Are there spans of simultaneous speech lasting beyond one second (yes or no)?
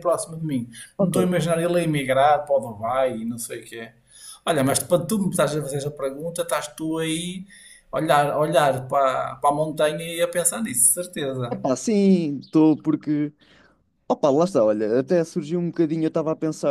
no